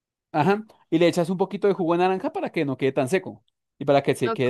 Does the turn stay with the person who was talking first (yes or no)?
no